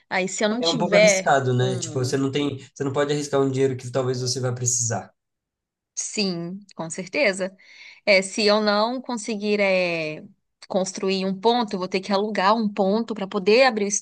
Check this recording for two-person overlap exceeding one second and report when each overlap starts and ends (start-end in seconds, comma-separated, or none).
0.6-2.2